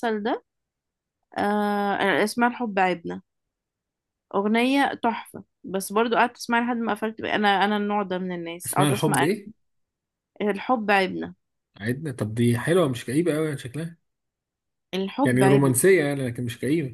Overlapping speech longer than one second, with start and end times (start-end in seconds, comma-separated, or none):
none